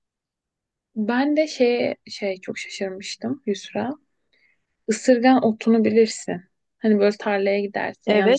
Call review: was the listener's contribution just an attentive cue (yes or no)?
no